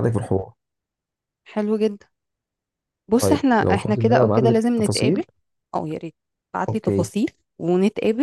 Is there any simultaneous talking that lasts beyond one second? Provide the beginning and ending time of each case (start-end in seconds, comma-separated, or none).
3.2-5.2